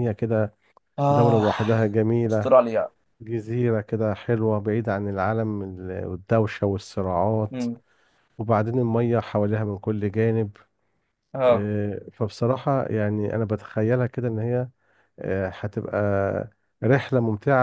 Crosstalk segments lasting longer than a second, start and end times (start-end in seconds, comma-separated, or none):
none